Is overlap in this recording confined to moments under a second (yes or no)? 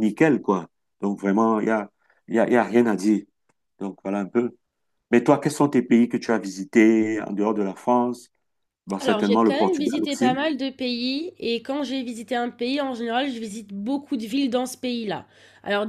no